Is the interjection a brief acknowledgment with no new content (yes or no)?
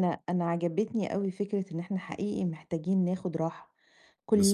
yes